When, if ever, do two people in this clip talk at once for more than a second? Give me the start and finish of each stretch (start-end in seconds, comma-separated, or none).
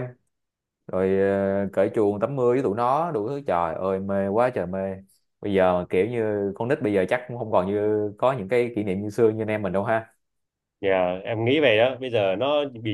none